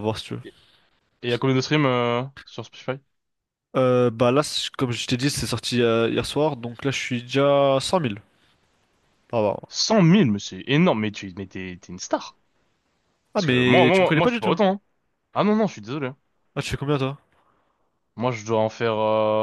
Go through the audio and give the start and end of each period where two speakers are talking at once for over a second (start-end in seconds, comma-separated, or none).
13.3-14.6